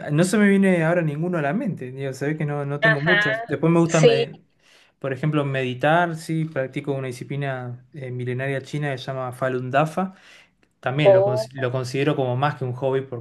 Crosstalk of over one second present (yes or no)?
yes